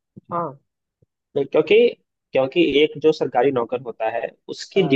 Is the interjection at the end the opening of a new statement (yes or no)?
no